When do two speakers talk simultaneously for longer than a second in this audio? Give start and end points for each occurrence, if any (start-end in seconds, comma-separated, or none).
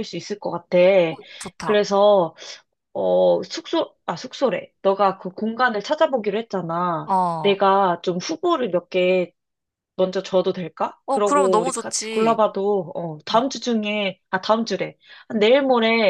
11.1-12.4